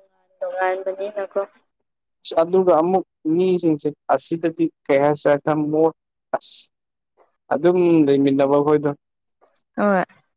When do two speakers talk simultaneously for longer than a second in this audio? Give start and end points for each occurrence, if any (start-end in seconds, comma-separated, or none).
none